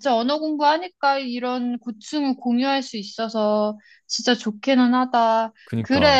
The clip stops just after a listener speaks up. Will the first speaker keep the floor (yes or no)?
yes